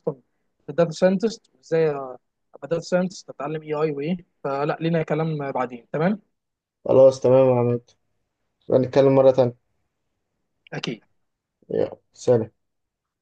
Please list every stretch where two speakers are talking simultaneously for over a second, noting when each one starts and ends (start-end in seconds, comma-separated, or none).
none